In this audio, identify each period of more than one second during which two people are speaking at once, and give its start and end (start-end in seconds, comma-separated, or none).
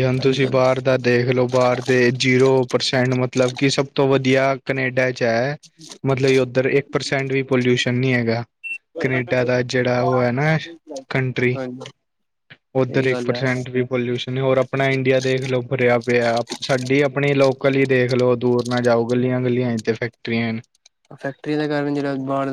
none